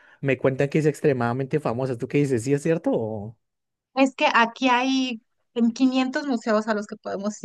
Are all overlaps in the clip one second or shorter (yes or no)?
yes